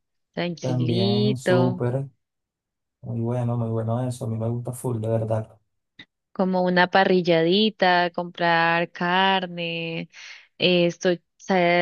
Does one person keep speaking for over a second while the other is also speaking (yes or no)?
yes